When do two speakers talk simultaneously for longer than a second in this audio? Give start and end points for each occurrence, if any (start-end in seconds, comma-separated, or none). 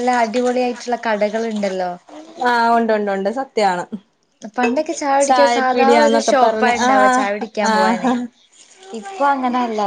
5.3-6.9